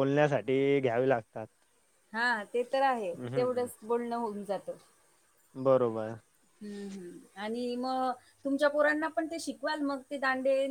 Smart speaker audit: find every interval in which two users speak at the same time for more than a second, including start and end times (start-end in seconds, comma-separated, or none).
none